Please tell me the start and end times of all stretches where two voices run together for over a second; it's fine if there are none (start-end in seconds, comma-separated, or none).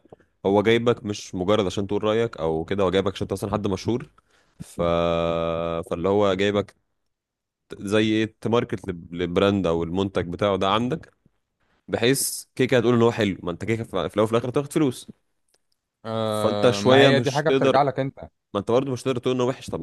16.2-17.9